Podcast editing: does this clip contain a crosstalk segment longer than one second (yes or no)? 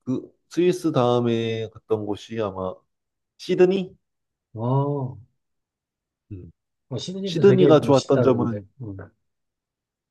yes